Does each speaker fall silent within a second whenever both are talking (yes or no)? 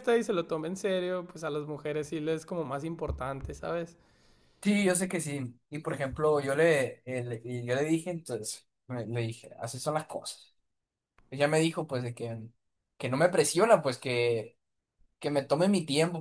yes